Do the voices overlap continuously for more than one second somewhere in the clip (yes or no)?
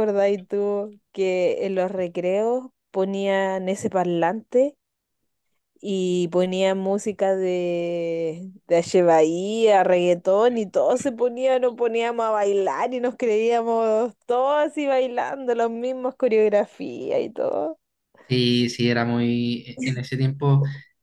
no